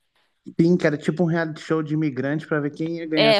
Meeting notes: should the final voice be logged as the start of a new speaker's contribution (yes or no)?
yes